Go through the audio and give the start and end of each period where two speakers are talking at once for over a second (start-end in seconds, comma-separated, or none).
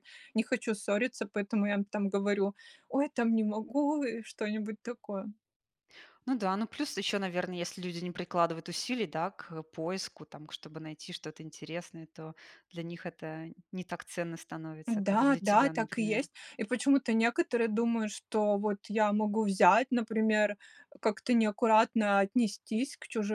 14.9-16.3